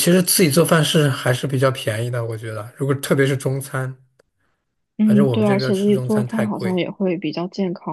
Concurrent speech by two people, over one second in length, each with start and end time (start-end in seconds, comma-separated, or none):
5.0-6.8